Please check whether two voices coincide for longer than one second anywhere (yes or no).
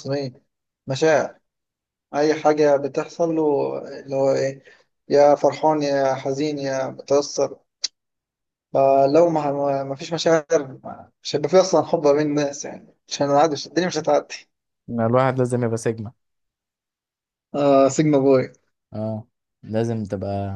no